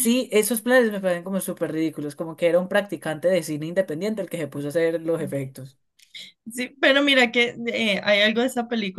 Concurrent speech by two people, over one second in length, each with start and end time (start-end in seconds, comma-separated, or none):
none